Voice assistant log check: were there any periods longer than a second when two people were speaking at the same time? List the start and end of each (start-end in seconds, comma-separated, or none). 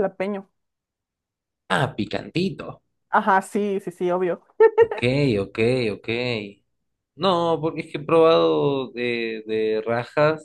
none